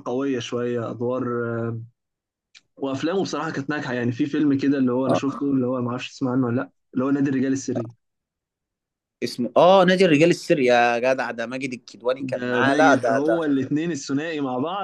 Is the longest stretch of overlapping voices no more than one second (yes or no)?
no